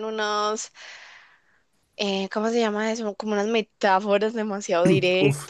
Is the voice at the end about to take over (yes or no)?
yes